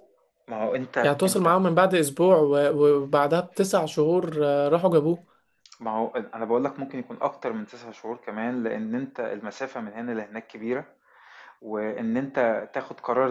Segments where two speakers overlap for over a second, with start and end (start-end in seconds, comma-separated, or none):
none